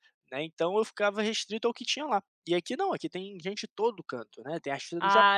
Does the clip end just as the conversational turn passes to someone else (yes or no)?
no